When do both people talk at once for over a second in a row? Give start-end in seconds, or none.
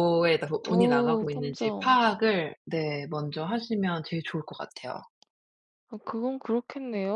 0.6-2.0